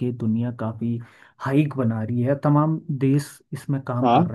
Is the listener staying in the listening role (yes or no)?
yes